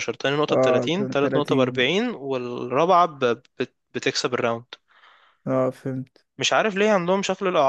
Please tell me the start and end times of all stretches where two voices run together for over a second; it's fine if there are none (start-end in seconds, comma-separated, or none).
0.5-1.7